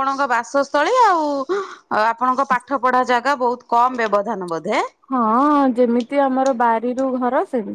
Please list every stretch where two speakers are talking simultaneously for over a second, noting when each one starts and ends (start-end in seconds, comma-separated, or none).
none